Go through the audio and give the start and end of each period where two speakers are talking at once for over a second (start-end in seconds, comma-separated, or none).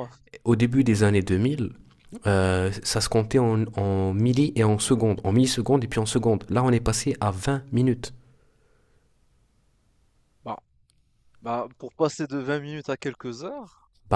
none